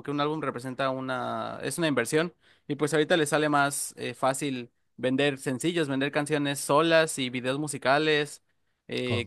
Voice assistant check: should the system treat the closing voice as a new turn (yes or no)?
no